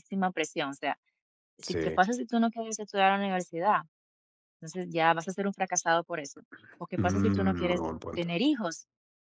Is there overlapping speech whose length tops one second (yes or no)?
yes